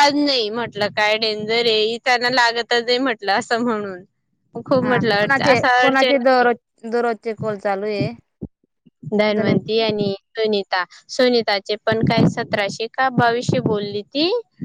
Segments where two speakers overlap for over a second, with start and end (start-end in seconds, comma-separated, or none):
4.8-6.5